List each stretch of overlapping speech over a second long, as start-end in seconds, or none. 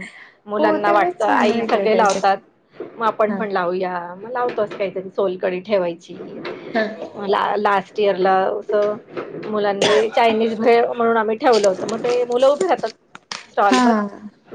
0.6-2.2